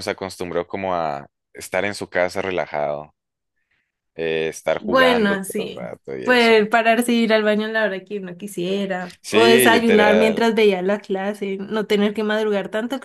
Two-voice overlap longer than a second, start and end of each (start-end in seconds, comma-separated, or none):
4.8-6.5, 9.2-10.5